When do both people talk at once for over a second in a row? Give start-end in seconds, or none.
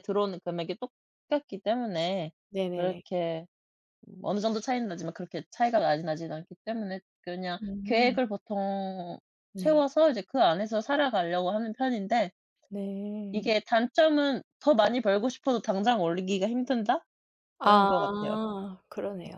none